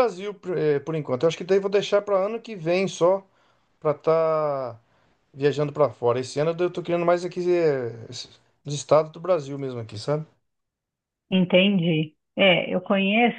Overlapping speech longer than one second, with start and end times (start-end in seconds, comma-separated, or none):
none